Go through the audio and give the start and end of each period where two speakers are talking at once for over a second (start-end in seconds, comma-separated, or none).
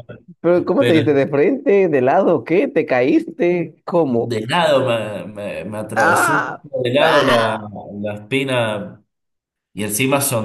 6.0-7.6